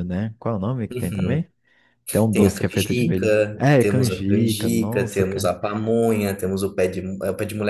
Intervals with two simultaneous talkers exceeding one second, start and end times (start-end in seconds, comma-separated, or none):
2.3-5.5